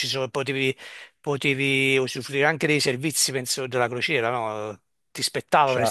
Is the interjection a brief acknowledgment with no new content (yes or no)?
yes